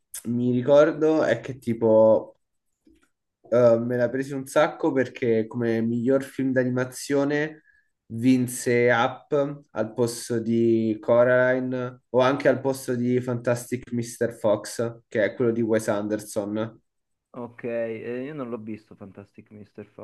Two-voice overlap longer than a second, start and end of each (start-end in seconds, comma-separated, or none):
none